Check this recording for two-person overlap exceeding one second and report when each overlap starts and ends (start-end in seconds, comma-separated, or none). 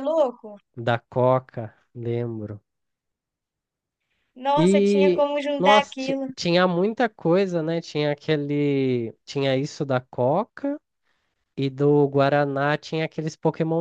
4.6-6.3